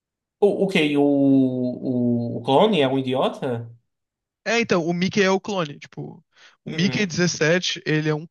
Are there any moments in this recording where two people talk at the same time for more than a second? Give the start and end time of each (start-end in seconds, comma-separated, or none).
none